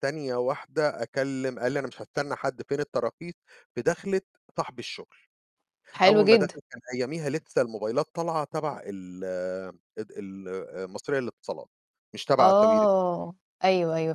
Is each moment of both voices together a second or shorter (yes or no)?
yes